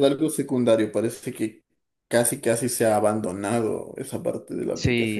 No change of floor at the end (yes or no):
no